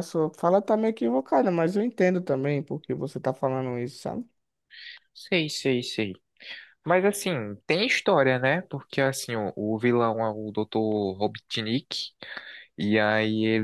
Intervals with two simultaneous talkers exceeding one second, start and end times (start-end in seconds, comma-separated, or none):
none